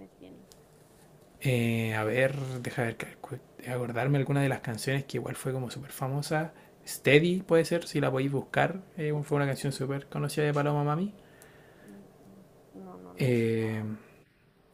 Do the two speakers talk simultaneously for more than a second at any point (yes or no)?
no